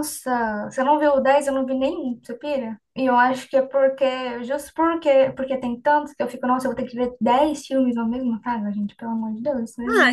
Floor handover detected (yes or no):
yes